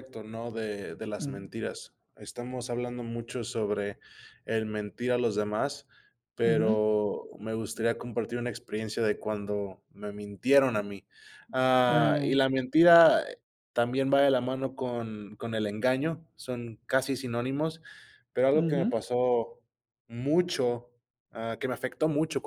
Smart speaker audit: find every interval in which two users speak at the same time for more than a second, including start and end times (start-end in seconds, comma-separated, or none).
none